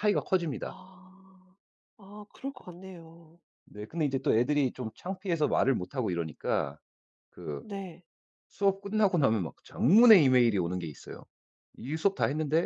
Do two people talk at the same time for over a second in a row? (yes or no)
no